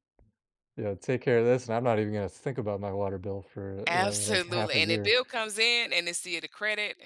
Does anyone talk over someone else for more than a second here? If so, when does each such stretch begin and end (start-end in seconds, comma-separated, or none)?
3.9-5.2